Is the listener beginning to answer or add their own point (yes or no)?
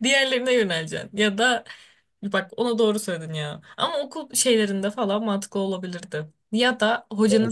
no